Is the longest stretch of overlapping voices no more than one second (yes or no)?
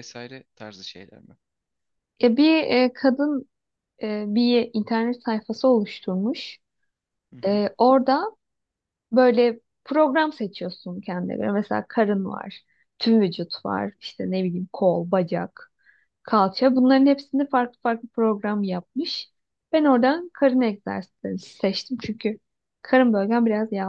yes